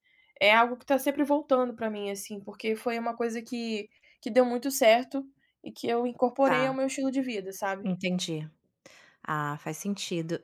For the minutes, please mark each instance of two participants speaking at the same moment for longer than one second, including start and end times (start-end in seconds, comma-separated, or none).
none